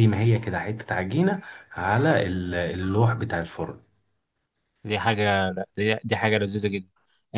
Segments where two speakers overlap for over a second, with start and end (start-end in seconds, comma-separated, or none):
none